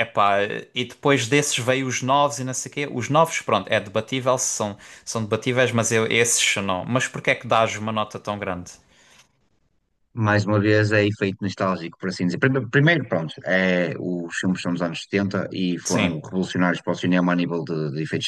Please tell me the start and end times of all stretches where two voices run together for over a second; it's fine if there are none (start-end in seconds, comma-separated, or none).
none